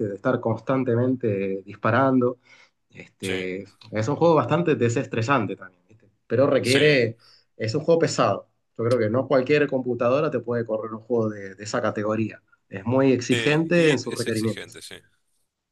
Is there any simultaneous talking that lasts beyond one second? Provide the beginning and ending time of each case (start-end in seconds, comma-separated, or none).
13.3-14.8